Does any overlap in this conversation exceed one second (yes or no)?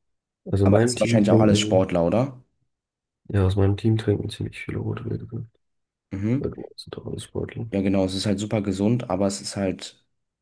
yes